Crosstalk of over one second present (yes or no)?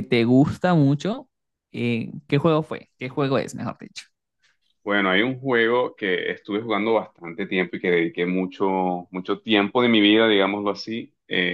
no